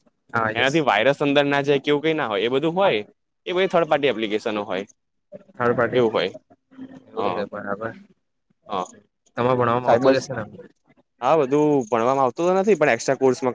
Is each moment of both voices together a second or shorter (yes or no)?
yes